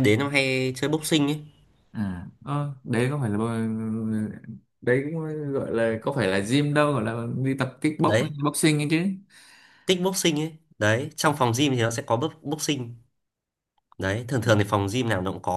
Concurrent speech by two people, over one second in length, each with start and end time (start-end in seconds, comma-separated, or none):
none